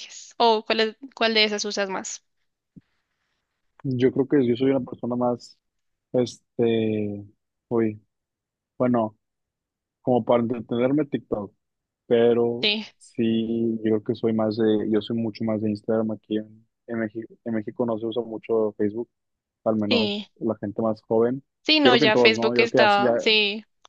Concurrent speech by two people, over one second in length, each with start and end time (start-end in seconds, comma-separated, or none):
21.8-23.1